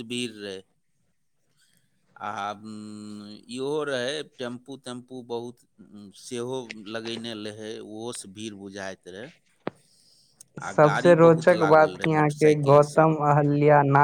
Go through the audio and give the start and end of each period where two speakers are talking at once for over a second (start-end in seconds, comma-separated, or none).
10.7-13.1